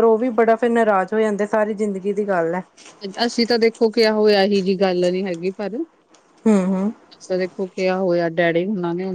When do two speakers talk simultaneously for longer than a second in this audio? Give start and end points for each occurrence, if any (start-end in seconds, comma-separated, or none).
none